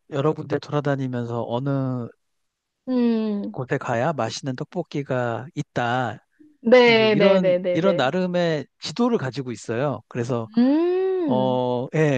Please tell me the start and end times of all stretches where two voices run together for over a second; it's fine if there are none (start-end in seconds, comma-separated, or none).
6.9-8.2